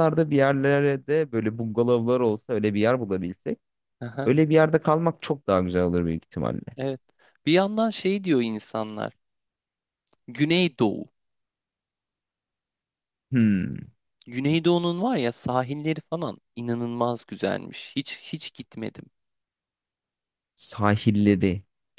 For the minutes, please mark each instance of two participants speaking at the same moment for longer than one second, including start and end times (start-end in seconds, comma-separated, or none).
none